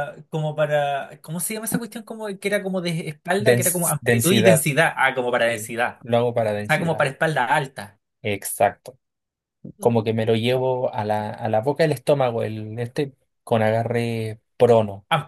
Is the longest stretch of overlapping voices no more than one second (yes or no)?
no